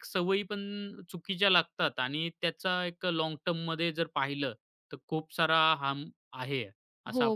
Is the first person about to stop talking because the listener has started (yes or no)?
yes